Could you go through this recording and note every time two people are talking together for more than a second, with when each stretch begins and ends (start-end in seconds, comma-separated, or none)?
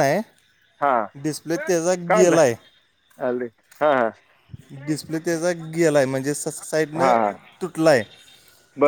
none